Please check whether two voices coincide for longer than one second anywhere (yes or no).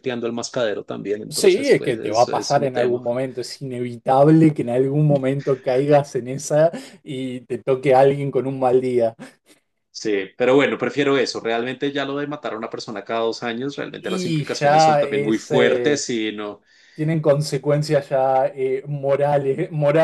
yes